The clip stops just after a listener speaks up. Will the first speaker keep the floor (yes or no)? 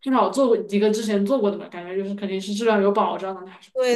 no